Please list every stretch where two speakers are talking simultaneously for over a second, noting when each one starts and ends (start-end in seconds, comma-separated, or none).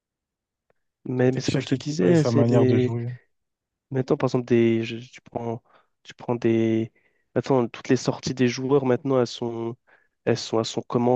1.2-3.0